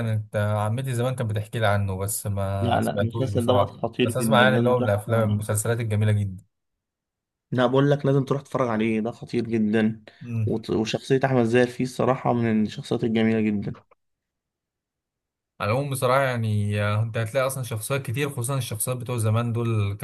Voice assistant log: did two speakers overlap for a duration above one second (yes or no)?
yes